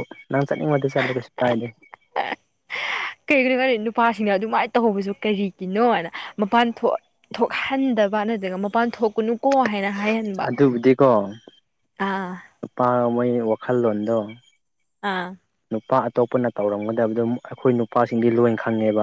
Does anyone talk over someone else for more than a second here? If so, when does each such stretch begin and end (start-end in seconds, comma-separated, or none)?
none